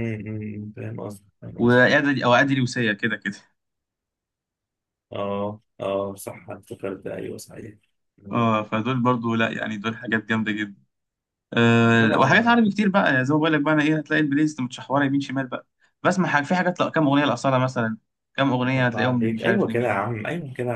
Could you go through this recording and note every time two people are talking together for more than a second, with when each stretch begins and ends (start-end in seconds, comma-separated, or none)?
18.8-20.0